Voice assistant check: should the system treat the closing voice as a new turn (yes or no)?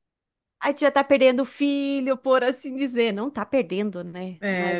yes